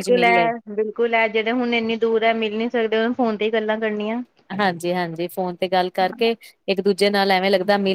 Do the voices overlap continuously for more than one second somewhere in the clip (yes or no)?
no